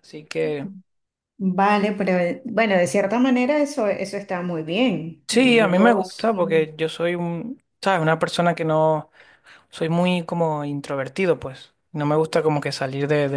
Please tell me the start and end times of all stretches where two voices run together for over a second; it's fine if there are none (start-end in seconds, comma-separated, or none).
5.3-6.7